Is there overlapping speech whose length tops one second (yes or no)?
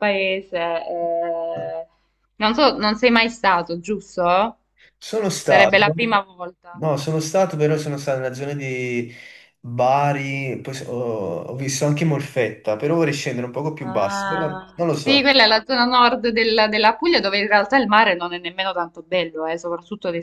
yes